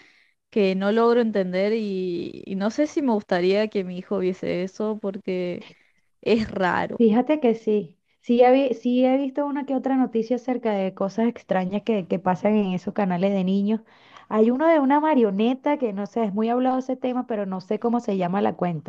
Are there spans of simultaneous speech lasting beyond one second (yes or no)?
no